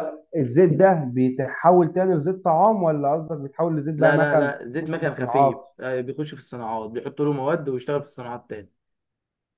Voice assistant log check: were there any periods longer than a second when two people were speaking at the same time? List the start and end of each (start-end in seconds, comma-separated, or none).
4.0-5.6